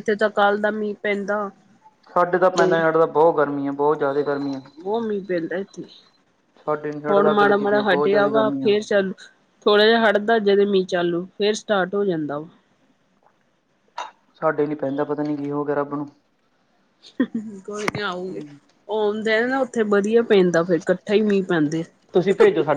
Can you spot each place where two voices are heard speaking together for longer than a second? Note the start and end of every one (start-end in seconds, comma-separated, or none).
7.1-8.7